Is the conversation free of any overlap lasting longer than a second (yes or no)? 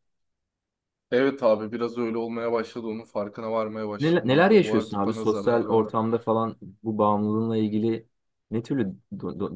no